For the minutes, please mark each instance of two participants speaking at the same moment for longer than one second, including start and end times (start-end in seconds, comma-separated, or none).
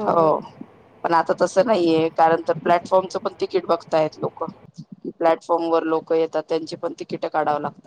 2.6-4.4